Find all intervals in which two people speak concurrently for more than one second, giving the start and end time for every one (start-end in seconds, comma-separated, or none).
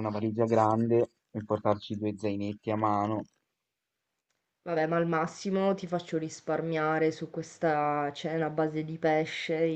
none